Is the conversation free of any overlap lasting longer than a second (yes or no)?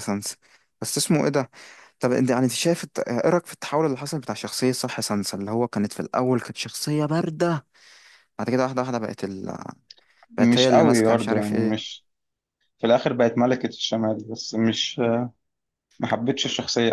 no